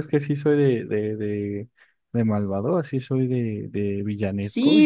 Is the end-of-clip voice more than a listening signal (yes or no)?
yes